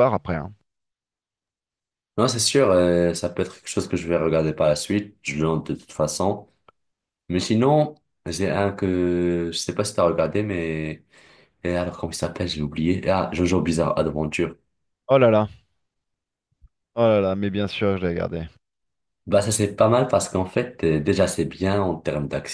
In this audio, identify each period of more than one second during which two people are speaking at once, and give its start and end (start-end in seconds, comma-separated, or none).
none